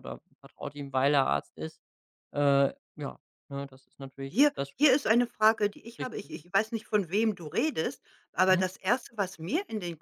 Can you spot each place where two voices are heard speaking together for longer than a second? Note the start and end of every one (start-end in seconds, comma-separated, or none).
none